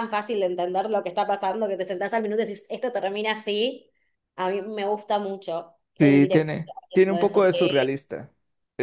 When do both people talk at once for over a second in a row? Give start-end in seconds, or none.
6.0-8.0